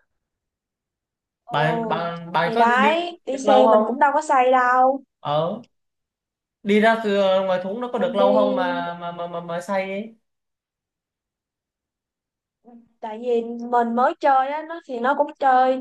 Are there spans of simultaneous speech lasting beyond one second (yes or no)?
yes